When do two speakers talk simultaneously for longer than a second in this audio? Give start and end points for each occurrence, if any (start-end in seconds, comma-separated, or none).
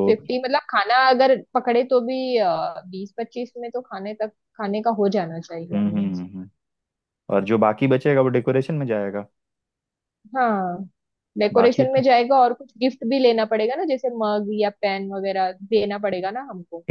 none